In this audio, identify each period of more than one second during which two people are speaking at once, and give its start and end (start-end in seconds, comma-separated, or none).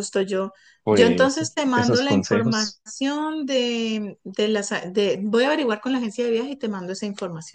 0.9-2.8